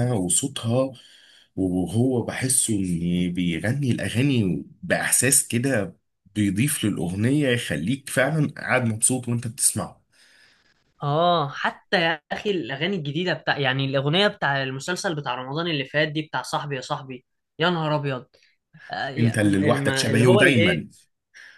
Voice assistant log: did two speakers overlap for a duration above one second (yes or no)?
yes